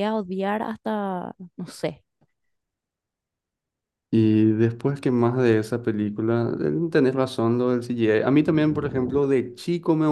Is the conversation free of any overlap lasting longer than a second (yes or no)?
yes